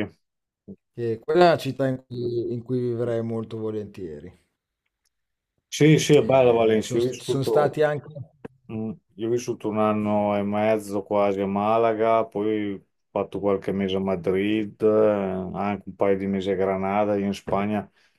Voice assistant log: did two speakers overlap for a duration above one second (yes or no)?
yes